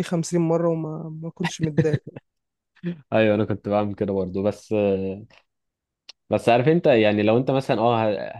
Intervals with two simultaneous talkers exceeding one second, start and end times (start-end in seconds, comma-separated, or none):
none